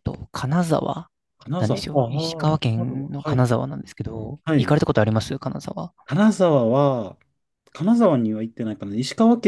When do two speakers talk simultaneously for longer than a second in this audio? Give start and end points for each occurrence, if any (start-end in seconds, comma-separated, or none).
1.6-3.5